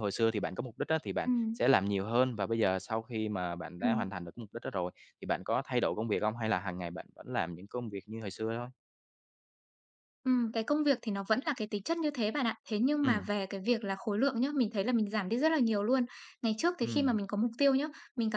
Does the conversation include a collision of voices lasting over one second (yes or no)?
no